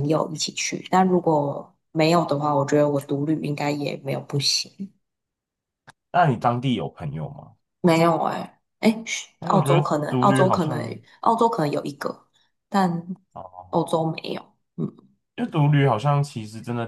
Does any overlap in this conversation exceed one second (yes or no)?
yes